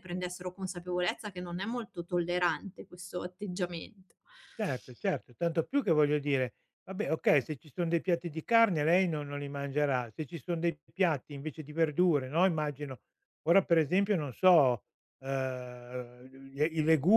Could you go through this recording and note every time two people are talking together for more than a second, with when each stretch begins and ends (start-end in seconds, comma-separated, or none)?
none